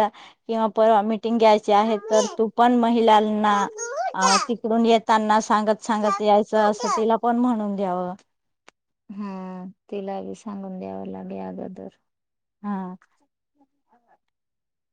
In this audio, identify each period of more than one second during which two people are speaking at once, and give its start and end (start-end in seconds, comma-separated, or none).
none